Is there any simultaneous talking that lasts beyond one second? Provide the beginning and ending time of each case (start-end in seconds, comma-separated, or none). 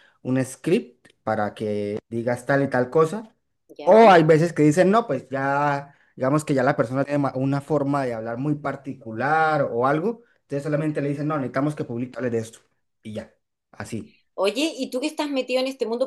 none